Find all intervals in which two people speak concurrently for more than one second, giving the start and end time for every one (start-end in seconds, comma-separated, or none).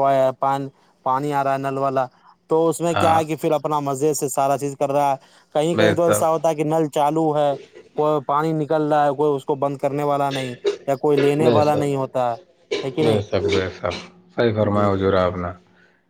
none